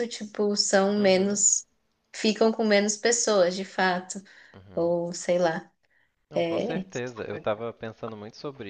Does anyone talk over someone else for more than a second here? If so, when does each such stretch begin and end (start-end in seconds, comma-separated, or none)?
none